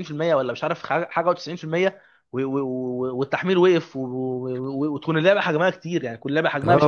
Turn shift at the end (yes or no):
yes